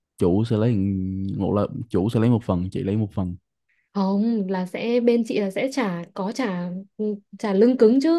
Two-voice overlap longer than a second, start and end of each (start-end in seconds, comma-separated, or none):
none